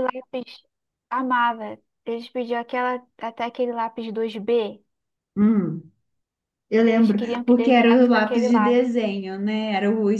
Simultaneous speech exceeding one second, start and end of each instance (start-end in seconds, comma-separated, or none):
6.8-8.8